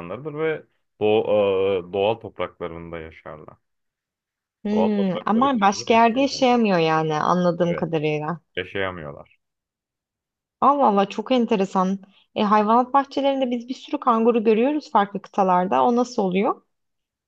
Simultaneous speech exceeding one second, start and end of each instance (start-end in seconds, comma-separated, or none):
4.7-6.6